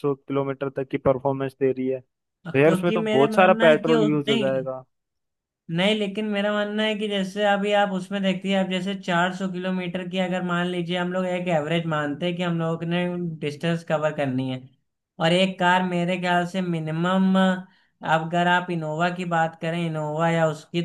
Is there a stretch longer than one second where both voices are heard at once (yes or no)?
yes